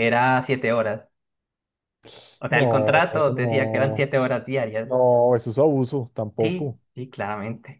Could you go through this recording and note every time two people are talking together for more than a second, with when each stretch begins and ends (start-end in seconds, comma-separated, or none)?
2.5-4.1